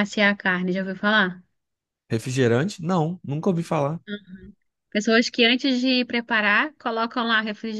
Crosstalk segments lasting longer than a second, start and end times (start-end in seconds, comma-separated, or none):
none